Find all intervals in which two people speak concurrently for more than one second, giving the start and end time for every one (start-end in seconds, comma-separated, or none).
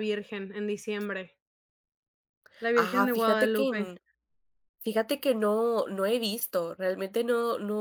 2.7-3.9